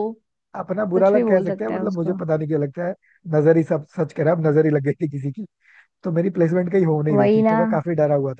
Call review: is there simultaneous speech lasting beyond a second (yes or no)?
yes